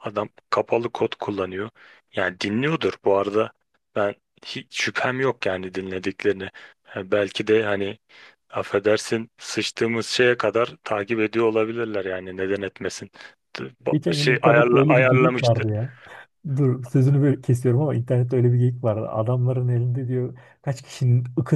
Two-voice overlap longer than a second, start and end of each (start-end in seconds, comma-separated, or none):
13.9-15.7